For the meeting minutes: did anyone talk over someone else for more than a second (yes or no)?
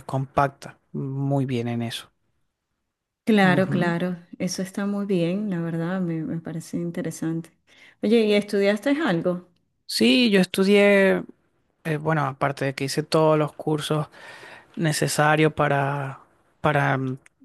no